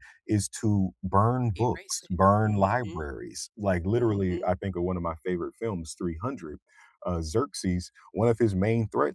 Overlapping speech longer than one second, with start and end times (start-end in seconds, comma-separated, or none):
1.6-3.0